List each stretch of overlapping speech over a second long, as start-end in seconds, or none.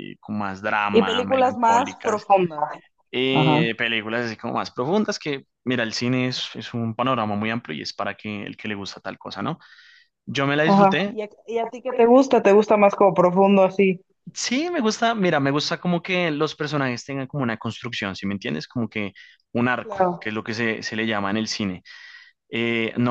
0.9-2.3